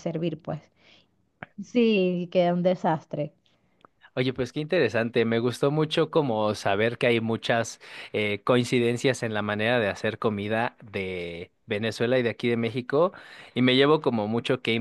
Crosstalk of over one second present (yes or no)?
no